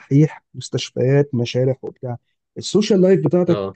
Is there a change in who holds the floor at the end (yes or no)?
no